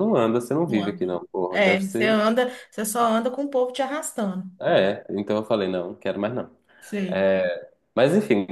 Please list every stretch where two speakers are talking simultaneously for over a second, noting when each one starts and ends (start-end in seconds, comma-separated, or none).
0.7-2.2